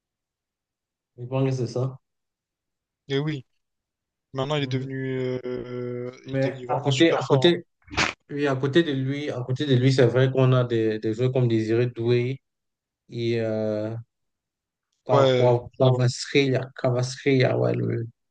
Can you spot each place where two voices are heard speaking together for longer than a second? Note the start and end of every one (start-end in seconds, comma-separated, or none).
6.2-7.5